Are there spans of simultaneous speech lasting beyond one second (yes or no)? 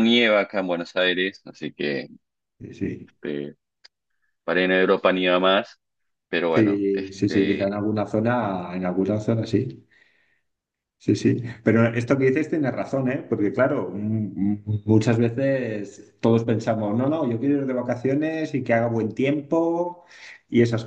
yes